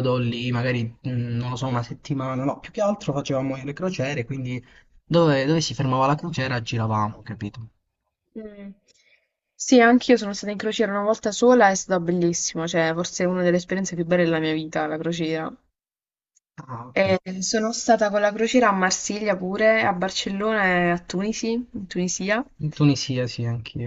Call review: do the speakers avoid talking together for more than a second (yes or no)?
yes